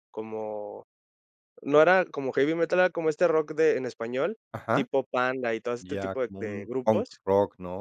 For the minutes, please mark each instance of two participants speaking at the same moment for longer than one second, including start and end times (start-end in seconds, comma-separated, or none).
5.8-7.2